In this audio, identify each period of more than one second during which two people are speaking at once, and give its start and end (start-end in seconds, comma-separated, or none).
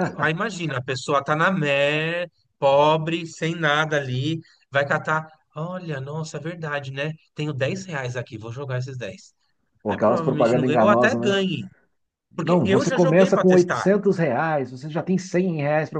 9.9-11.4, 12.3-13.8